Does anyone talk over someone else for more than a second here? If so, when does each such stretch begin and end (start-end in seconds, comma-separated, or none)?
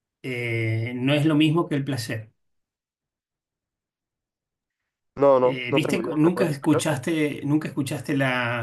5.4-6.8